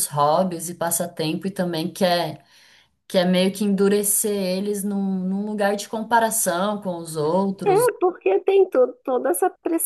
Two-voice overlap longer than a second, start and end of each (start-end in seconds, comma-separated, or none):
none